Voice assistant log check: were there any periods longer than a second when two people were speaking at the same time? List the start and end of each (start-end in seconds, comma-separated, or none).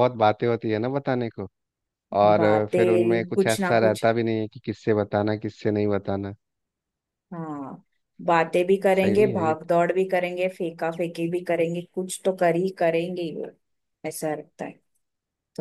2.4-4.1